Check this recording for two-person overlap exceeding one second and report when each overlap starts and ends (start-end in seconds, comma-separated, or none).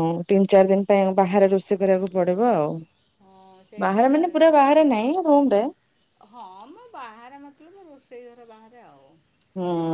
none